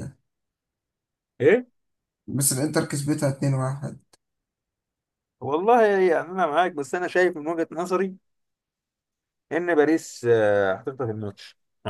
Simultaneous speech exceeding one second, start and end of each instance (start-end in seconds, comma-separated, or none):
none